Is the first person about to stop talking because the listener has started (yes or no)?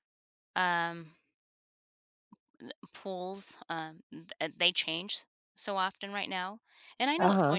no